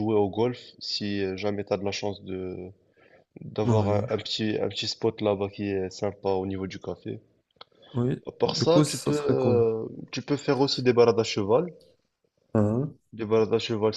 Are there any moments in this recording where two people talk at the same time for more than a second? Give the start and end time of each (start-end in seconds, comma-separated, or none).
8.3-9.6